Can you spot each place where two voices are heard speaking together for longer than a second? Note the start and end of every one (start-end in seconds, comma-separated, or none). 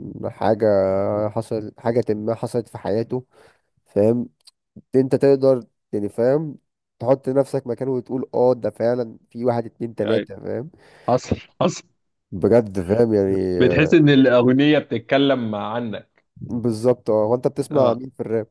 none